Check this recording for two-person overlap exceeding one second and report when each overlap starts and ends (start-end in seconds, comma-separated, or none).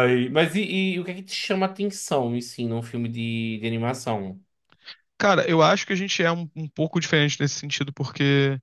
none